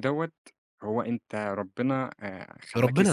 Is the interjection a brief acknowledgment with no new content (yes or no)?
no